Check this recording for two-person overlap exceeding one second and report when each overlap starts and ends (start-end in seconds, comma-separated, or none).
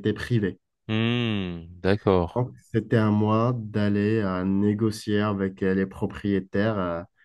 none